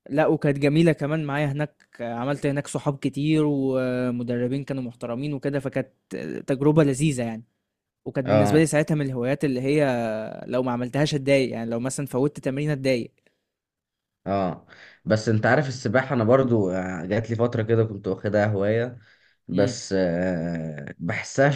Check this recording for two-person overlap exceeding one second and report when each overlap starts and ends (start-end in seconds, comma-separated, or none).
none